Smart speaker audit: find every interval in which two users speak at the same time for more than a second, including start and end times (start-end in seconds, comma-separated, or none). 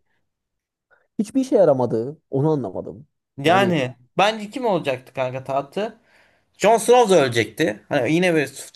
none